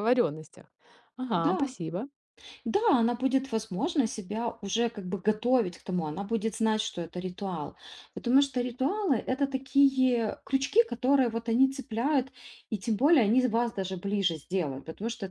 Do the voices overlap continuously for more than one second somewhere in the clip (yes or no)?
no